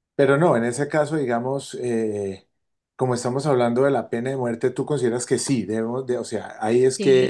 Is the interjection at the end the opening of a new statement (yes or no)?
yes